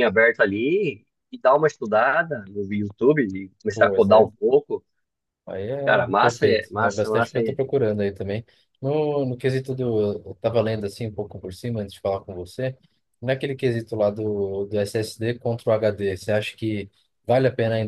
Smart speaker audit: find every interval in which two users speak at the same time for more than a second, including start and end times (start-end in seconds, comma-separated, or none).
6.2-7.6